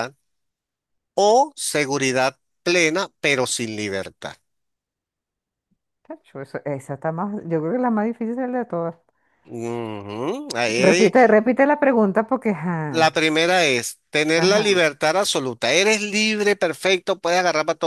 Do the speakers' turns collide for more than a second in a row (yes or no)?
no